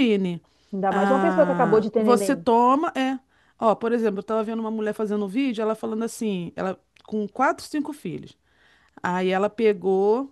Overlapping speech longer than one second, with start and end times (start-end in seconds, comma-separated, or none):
0.9-2.5